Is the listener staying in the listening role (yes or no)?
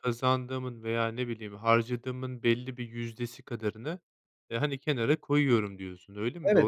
no